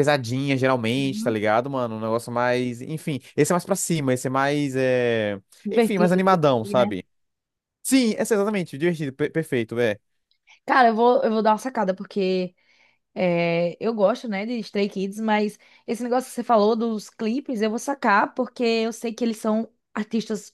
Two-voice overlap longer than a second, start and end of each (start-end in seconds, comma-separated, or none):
5.7-7.0